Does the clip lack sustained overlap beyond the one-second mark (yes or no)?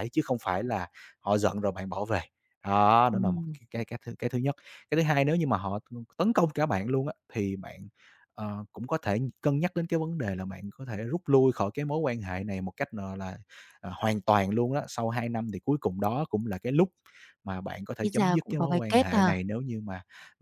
no